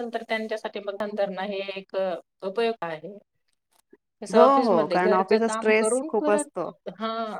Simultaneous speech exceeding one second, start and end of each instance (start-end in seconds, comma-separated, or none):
4.3-6.5